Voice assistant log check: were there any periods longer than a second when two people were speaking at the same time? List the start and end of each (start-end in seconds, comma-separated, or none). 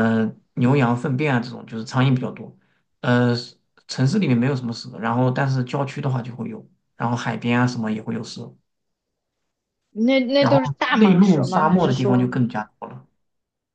10.4-12.3